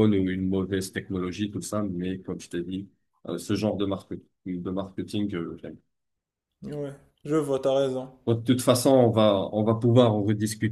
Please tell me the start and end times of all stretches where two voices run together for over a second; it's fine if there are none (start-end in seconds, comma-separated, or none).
none